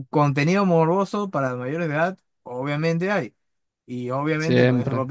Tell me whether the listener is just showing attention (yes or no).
yes